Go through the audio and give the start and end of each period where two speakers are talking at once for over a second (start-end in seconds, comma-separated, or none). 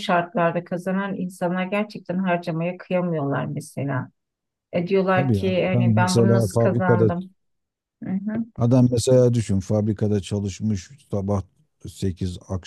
5.1-7.1